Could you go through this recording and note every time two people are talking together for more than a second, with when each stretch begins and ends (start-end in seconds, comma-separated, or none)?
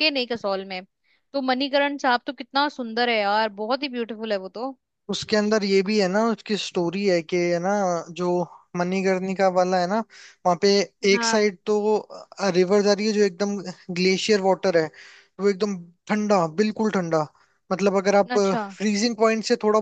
none